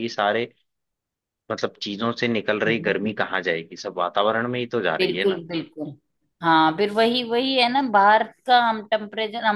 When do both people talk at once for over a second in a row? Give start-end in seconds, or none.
none